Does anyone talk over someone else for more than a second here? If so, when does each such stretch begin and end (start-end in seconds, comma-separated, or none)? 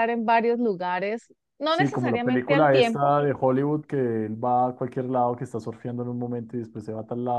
1.7-3.2